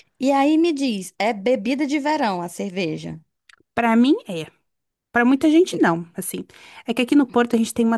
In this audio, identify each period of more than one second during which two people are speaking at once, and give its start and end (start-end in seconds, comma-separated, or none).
none